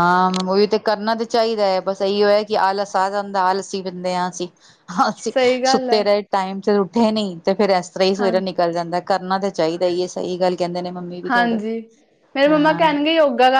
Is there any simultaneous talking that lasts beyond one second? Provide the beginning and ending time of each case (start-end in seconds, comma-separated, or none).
none